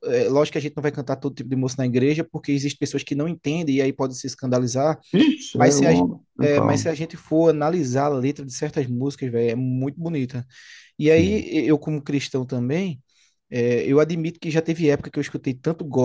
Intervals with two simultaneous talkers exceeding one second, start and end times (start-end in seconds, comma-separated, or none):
5.5-6.9